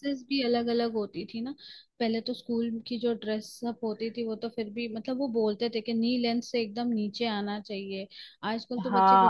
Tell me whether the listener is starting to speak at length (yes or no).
yes